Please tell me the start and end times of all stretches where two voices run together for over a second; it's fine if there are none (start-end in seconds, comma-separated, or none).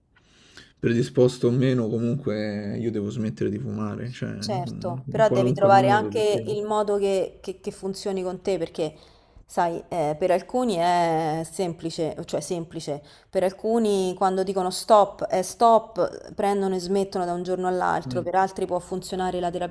4.4-6.5